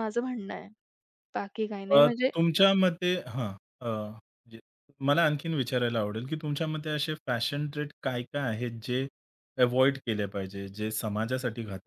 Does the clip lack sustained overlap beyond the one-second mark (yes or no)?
yes